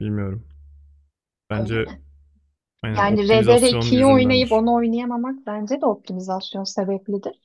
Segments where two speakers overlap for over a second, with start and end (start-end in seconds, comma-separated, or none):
2.9-4.6